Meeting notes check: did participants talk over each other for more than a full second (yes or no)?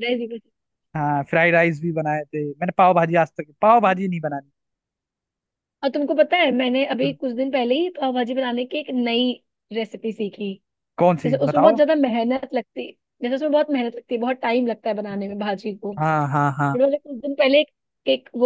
no